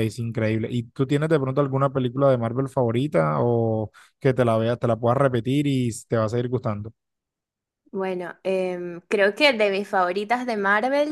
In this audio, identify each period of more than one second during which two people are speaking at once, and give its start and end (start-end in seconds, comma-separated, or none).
none